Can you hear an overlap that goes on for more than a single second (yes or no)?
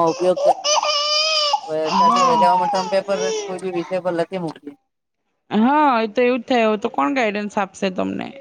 no